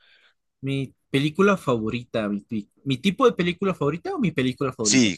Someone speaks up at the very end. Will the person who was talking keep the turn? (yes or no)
no